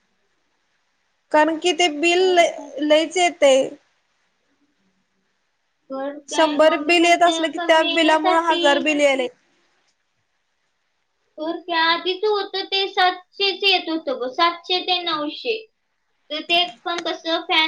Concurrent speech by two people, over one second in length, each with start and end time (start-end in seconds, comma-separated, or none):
6.3-8.9